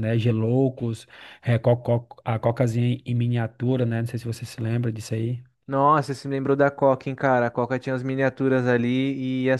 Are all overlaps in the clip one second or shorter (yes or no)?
yes